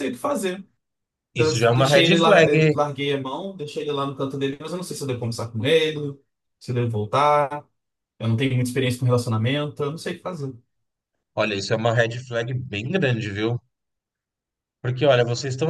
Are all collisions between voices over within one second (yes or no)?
no